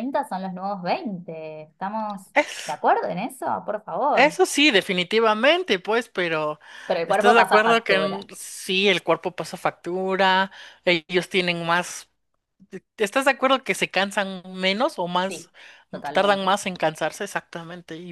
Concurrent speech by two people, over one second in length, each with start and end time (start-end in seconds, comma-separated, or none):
7.1-8.3